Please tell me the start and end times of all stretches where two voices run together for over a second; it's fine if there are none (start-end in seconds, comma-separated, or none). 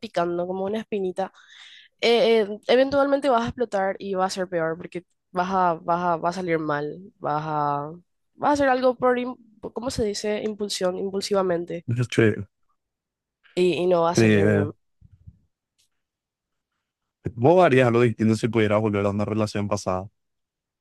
none